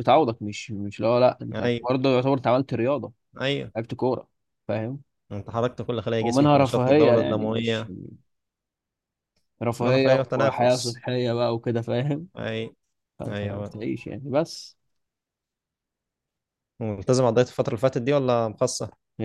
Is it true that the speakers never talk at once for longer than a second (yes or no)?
no